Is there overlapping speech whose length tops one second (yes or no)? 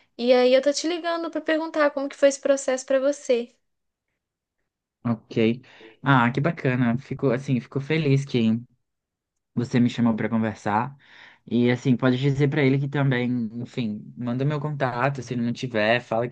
no